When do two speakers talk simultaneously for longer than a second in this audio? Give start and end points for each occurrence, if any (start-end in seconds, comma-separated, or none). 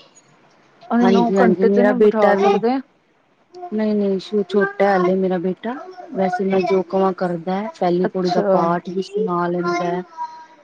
1.0-2.6